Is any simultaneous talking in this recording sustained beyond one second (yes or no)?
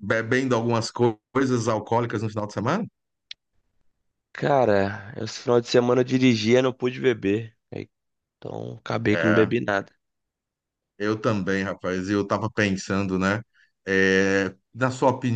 no